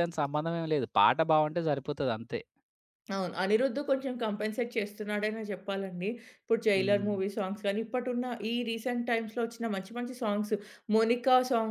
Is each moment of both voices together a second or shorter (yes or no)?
yes